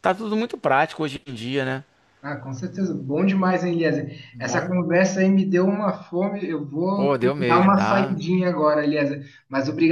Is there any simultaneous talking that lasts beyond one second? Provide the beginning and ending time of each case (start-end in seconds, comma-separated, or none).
6.9-8.2